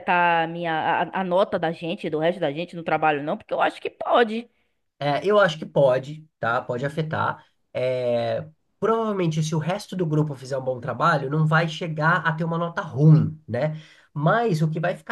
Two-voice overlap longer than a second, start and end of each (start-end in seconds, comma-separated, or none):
none